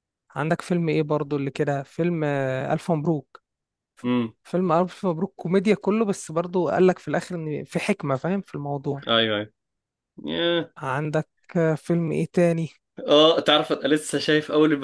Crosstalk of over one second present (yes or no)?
no